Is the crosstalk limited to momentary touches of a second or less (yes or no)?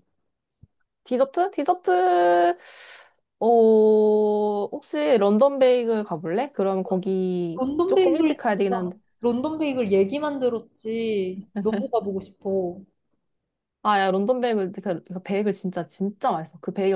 no